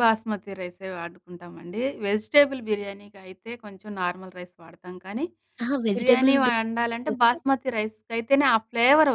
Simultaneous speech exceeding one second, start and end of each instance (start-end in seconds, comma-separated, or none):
6.0-7.4